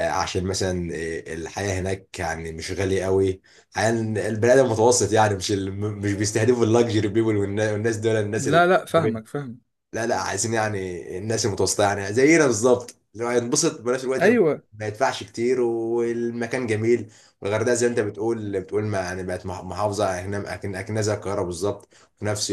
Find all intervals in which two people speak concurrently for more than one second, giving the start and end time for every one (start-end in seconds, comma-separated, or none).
none